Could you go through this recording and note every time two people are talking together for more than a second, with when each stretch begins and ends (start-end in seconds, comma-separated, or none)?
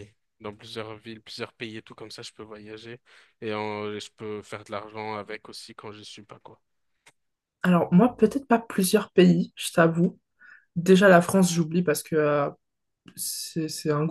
none